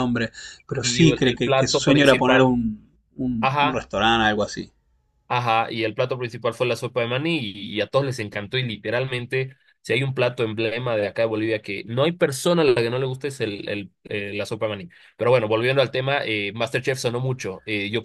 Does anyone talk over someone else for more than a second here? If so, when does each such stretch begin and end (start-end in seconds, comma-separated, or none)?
0.8-2.6